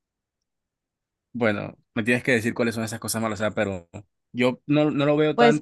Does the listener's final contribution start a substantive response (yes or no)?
yes